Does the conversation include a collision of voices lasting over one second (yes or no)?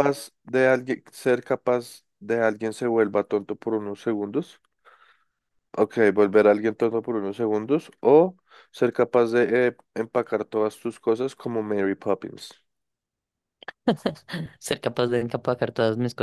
no